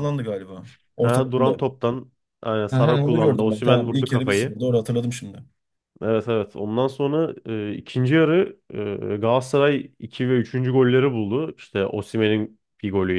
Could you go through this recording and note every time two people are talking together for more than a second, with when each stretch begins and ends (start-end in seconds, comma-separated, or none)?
2.7-4.6